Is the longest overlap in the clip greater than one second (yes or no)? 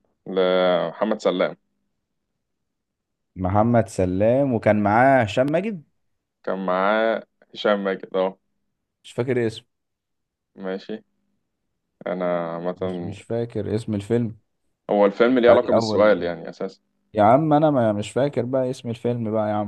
no